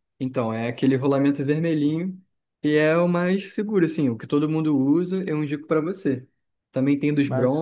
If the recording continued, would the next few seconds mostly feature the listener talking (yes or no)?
no